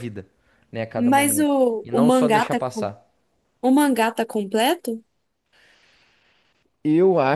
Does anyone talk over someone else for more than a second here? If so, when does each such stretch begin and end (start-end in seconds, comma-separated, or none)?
0.9-2.9